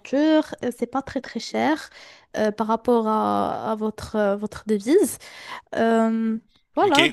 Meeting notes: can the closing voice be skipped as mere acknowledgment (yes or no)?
no